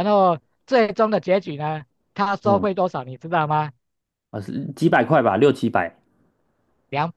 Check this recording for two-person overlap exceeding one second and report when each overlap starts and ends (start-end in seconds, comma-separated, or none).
none